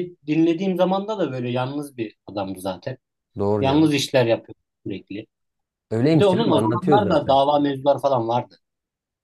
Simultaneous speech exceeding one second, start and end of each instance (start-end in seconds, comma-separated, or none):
6.1-7.4